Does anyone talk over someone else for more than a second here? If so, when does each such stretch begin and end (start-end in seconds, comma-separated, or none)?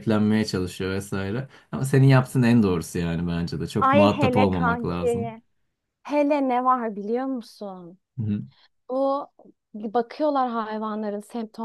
3.8-5.3